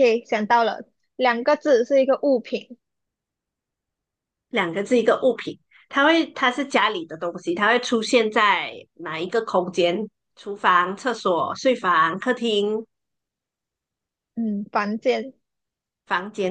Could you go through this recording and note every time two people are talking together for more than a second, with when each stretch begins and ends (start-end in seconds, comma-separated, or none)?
none